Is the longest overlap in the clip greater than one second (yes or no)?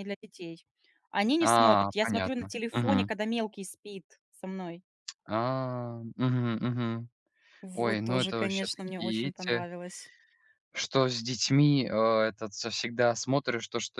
yes